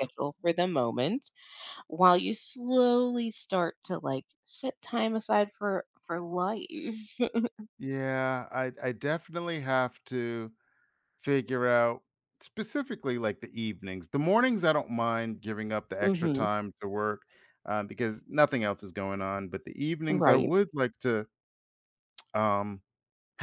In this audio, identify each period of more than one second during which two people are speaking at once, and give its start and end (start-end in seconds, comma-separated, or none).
none